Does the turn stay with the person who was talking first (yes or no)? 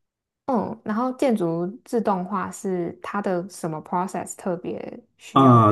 no